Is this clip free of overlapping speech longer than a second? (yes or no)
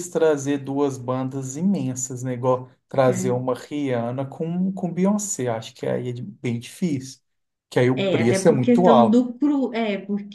no